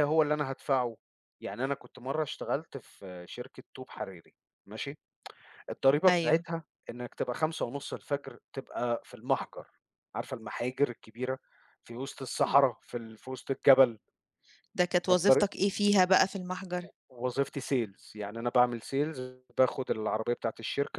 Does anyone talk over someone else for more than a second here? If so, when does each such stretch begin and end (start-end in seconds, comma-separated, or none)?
none